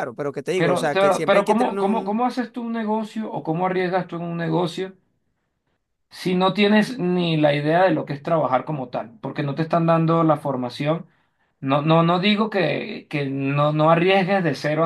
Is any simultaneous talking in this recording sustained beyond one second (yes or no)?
yes